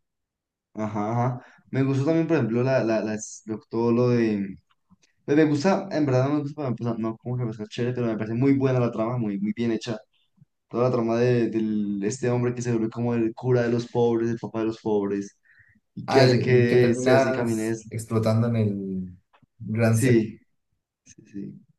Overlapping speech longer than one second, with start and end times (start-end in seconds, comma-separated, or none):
16.1-17.9